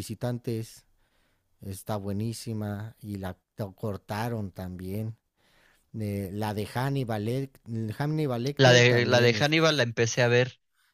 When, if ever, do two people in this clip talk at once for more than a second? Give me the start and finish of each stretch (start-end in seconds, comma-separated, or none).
8.6-9.8